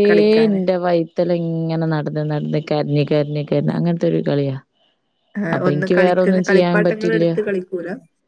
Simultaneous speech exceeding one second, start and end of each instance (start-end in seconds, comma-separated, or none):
5.5-7.2